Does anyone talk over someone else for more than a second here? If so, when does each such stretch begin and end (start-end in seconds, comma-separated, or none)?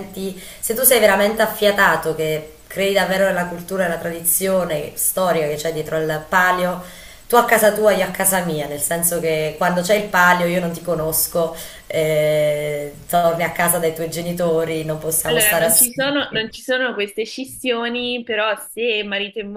15.3-16.6